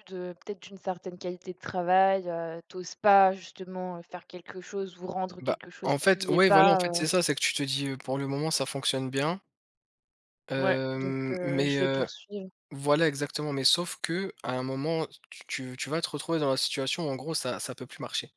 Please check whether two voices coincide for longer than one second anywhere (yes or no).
yes